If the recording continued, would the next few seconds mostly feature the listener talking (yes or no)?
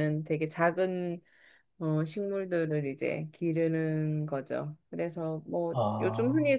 no